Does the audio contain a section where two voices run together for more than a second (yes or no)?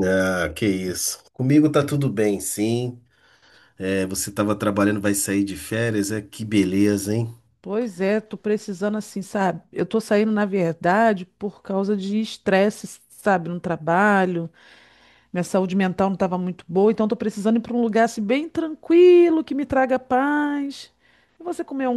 no